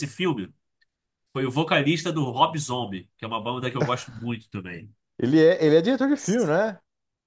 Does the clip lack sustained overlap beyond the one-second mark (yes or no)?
yes